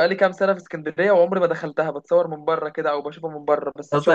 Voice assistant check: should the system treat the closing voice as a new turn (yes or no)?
yes